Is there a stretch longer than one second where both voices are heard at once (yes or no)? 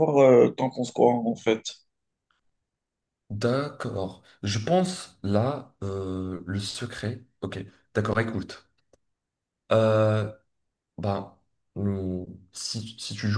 no